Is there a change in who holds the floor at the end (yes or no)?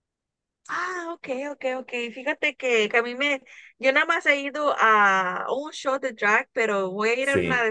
no